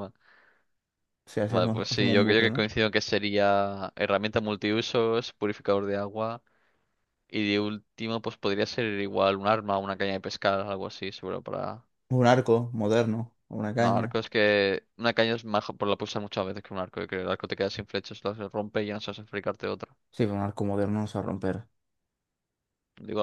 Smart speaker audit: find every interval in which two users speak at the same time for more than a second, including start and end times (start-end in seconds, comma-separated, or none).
1.4-2.7